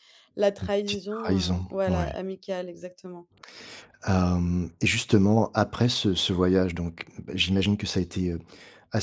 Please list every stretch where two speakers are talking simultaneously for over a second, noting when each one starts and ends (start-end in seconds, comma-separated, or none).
0.6-2.1